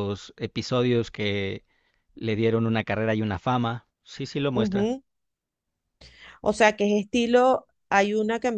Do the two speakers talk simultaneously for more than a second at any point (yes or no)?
no